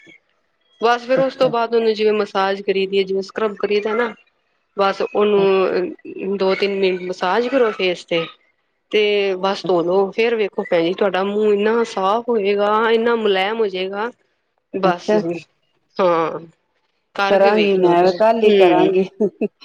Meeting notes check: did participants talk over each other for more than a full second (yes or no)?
yes